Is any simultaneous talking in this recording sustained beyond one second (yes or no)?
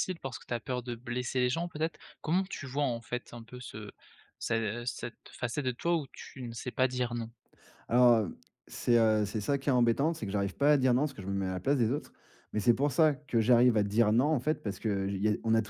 no